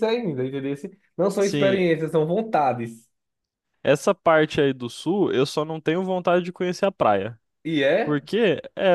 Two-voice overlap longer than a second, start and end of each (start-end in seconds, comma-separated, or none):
none